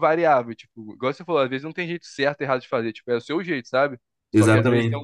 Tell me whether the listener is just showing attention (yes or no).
yes